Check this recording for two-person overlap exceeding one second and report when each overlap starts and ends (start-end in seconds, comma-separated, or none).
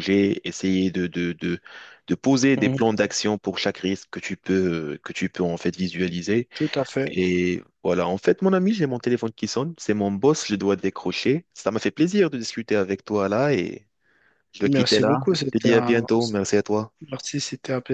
14.6-16.0